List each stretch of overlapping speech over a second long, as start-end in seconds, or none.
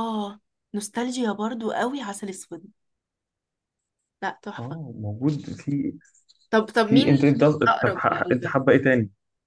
6.8-8.6